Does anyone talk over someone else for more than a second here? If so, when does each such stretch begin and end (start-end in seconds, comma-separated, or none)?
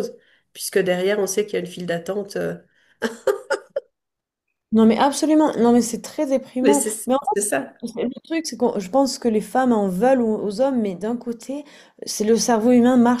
none